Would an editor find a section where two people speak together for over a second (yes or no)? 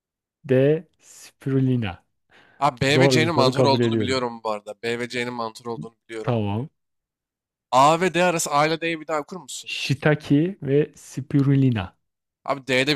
yes